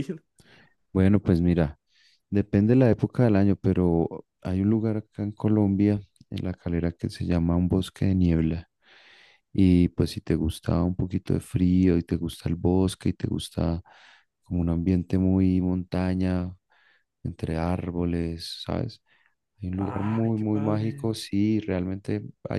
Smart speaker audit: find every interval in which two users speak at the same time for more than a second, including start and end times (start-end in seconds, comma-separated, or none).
19.8-21.1